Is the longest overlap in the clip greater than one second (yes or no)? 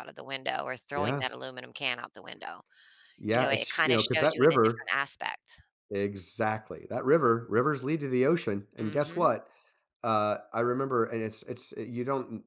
yes